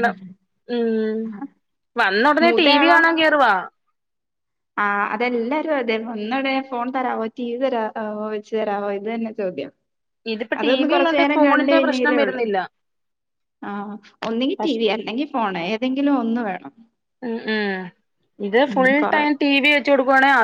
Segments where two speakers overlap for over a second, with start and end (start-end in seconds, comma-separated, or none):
10.6-12.4